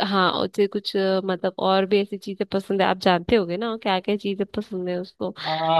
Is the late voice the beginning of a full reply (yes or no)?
yes